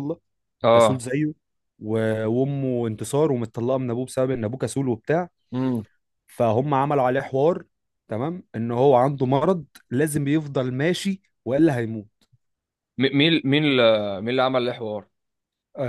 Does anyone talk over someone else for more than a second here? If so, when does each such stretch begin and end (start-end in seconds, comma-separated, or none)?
none